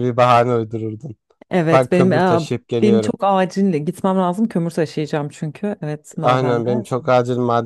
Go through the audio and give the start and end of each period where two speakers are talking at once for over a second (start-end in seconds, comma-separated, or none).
1.7-3.1